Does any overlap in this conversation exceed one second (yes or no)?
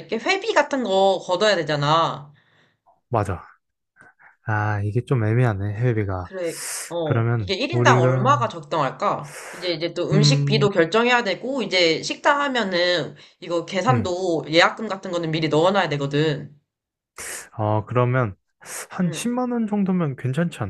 yes